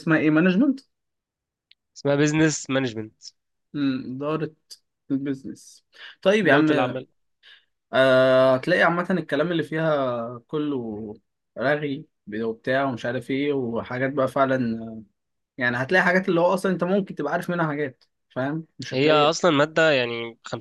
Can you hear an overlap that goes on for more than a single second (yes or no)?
no